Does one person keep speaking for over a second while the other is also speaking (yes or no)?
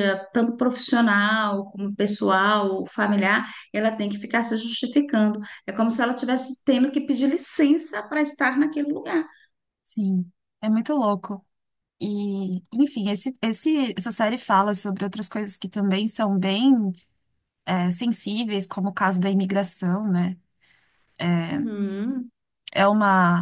no